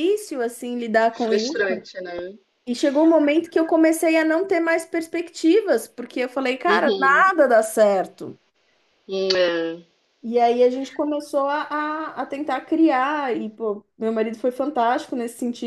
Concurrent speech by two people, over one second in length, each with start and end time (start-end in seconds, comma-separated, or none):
none